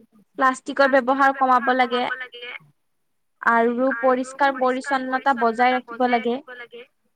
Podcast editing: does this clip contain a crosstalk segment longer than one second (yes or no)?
yes